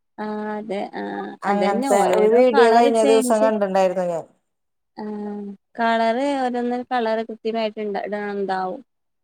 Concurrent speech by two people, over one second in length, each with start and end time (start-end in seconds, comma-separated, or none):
1.5-3.5